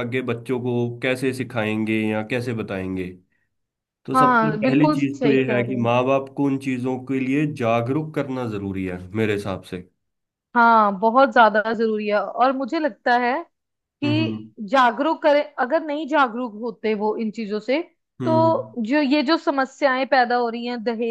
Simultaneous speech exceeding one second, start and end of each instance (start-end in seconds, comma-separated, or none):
4.1-5.9